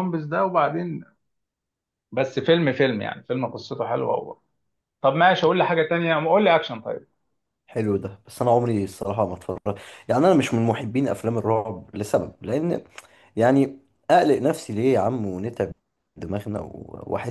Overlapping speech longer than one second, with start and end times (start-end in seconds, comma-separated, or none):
none